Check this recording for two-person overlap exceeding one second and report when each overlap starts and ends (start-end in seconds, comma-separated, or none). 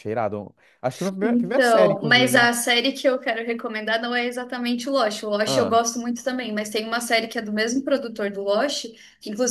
1.2-2.5